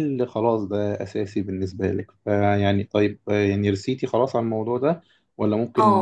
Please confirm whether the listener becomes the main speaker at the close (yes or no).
yes